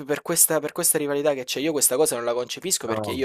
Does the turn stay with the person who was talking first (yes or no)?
yes